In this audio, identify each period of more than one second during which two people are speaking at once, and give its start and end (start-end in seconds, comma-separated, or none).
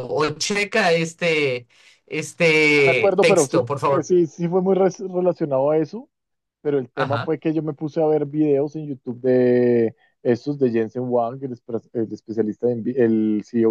2.7-4.1